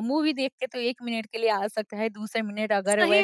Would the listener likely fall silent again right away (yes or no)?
no